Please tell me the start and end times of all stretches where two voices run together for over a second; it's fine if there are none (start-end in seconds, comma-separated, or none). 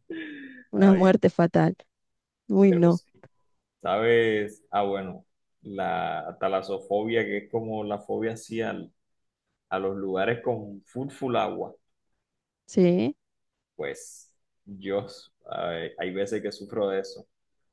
none